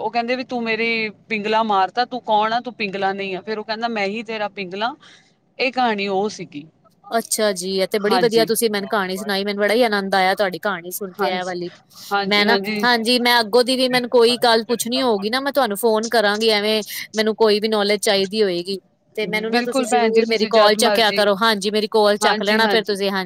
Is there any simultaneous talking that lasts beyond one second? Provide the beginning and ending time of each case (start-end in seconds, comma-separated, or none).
19.2-21.2